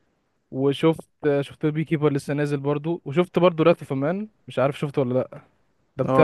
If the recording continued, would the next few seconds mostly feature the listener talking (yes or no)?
yes